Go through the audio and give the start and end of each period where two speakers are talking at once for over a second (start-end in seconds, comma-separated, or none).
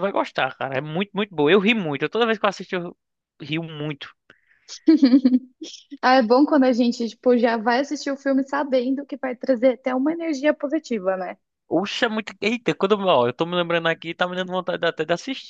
none